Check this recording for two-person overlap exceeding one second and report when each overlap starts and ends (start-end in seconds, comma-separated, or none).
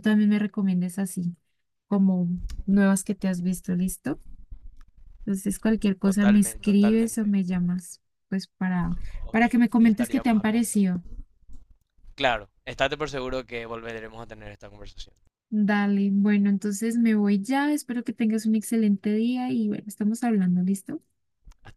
6.0-7.3, 9.3-10.8